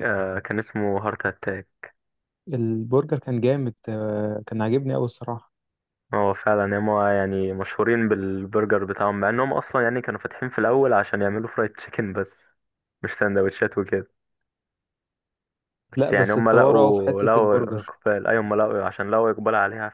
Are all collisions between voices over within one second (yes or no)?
no